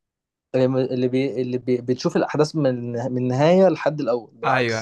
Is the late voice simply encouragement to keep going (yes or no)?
no